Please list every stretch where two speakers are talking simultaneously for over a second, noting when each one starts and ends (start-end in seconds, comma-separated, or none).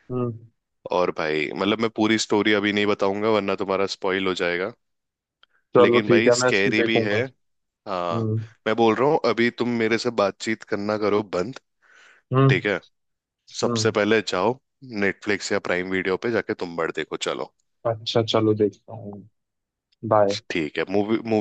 5.8-7.1